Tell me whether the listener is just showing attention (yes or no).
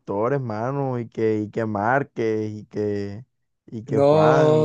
no